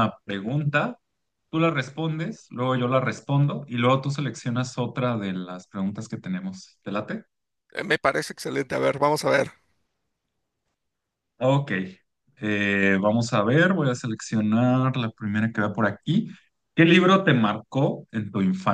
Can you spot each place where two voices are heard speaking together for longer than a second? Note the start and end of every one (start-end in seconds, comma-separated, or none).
none